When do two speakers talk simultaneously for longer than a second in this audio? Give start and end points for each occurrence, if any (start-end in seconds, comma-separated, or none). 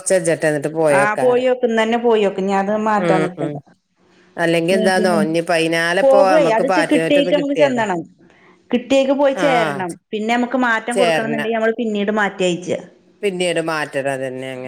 6.0-7.8